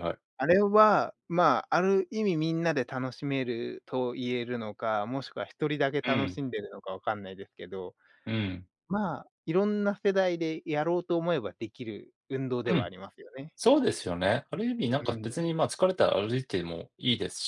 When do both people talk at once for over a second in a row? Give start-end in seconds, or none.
none